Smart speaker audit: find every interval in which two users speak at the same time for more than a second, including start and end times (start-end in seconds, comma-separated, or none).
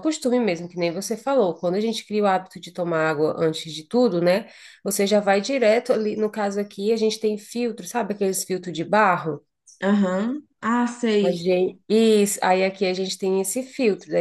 none